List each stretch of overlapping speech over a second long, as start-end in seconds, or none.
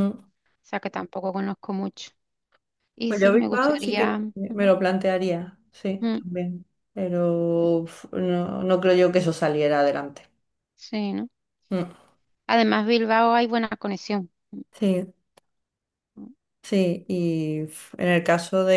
3.1-4.7